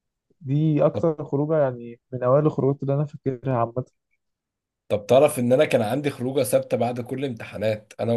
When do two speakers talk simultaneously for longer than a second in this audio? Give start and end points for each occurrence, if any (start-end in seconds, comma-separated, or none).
none